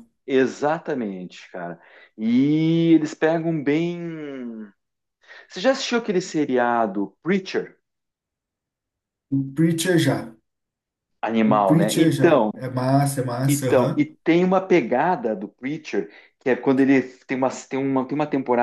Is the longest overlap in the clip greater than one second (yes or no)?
yes